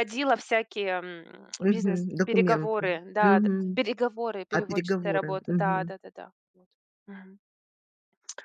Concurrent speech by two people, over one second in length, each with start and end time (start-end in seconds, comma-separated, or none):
1.6-3.8, 4.5-5.9